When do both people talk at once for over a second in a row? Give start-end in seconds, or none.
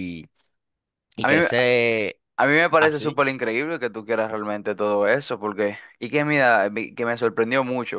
none